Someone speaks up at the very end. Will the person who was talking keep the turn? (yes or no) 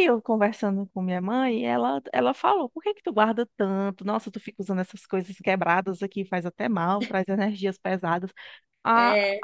yes